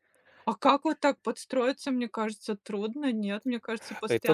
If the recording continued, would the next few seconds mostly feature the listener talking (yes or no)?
yes